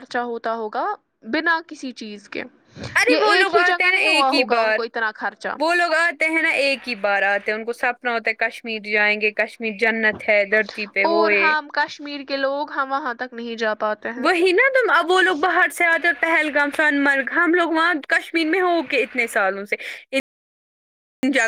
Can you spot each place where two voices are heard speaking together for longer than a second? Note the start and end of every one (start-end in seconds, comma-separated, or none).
3.1-4.8